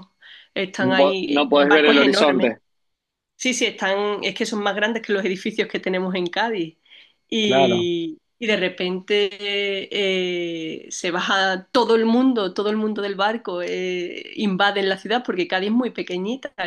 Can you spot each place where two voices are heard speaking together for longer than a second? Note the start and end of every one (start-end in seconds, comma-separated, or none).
0.8-2.5